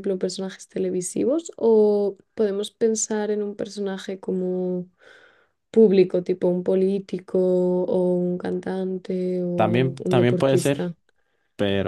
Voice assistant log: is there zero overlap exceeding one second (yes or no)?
no